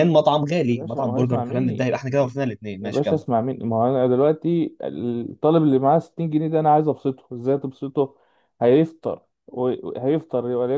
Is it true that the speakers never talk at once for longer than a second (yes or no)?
no